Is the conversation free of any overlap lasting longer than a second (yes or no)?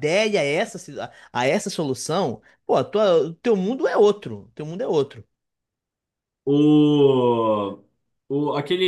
yes